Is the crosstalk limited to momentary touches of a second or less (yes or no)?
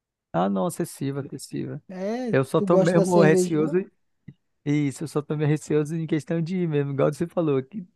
no